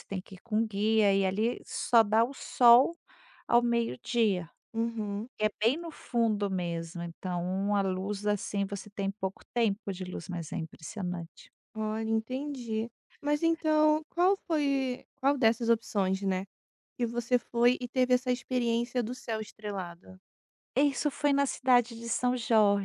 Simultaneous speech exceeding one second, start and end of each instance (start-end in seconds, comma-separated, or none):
none